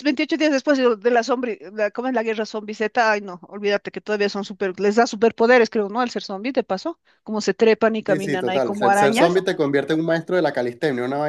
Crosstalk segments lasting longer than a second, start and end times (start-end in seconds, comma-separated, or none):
8.1-9.3